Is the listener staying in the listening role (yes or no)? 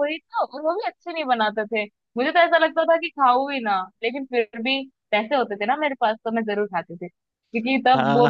no